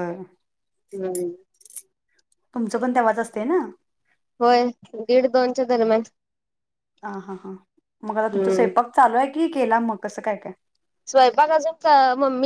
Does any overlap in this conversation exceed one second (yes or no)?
no